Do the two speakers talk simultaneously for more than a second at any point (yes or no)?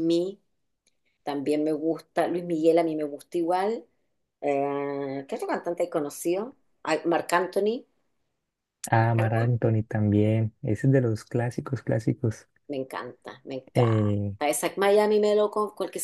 no